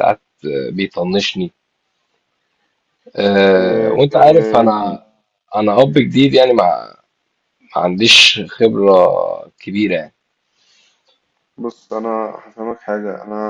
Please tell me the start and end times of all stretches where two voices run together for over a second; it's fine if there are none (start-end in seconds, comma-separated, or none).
3.5-5.0